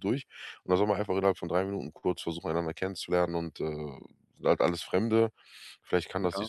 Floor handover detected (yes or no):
no